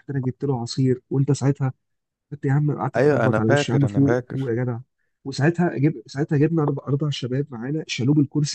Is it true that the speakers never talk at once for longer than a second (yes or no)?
no